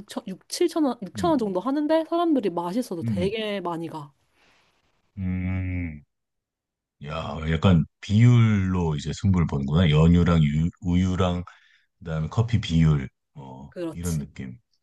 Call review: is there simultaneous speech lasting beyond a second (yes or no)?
no